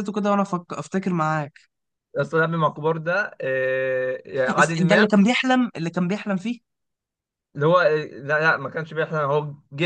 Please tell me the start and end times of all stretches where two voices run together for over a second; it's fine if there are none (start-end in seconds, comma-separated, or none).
none